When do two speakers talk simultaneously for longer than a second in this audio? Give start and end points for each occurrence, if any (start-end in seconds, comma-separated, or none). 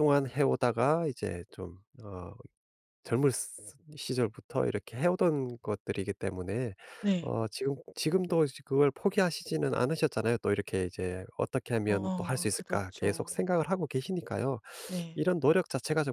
11.9-13.3